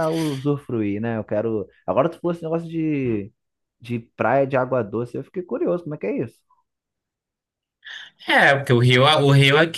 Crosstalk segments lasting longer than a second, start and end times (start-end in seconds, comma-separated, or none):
none